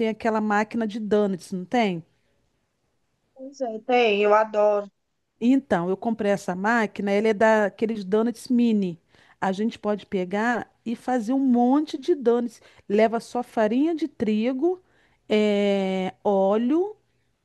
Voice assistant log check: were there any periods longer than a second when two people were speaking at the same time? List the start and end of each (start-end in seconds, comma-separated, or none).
none